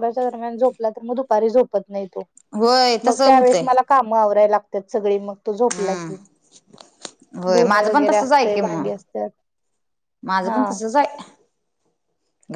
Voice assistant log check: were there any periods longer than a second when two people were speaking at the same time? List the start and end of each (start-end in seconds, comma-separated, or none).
7.5-8.9